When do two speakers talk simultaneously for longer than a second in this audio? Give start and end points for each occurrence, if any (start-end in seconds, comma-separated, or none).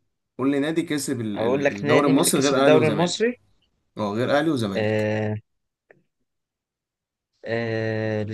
1.4-3.3